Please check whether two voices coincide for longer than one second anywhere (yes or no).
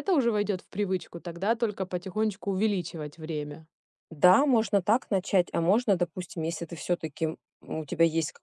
no